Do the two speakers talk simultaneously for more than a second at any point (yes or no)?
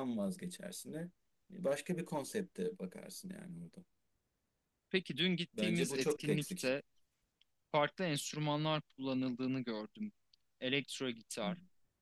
yes